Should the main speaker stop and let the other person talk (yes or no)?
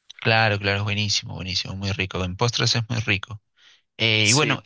no